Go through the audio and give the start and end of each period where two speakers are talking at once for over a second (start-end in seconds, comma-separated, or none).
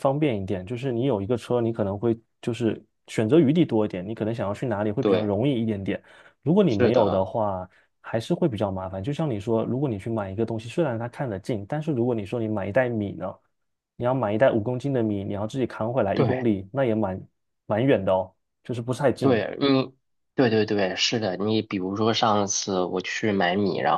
none